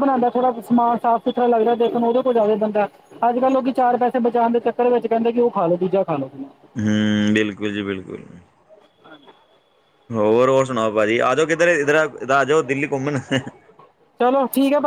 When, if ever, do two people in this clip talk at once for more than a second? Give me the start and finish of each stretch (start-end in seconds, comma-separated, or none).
none